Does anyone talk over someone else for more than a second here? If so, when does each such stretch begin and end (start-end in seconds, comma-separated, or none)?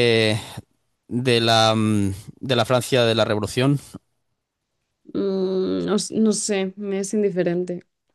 none